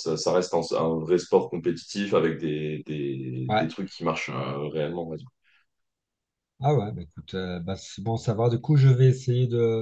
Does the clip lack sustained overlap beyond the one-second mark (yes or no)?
yes